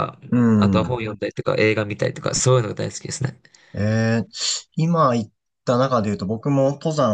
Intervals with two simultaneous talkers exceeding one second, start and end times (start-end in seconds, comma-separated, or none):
none